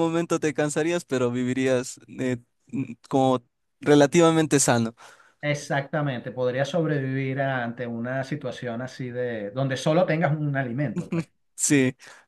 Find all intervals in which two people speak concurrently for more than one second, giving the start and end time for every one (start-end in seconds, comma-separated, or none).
none